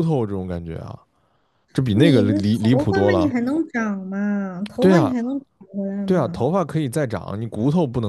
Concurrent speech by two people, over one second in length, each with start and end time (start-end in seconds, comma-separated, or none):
1.9-3.3